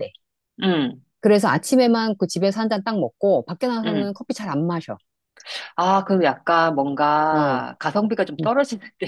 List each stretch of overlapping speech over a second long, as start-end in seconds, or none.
none